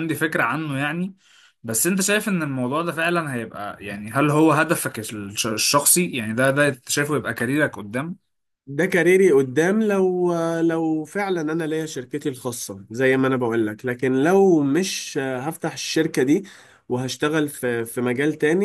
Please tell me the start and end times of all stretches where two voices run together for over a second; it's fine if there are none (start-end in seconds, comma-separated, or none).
none